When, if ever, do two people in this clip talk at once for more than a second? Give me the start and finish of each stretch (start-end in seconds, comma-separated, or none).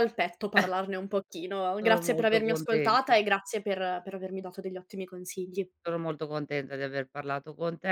1.8-3.1